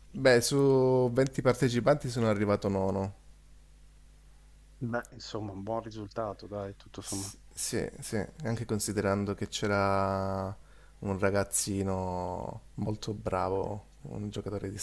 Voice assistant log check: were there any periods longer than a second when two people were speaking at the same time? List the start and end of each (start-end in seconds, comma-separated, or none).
none